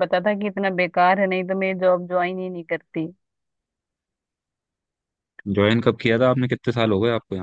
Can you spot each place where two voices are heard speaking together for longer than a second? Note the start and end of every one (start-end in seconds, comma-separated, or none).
none